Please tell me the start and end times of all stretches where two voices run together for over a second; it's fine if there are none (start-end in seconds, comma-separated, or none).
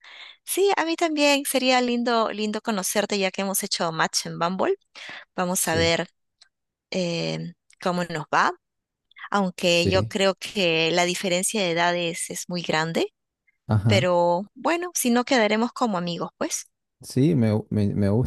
none